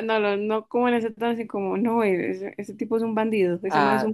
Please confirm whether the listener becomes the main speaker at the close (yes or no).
yes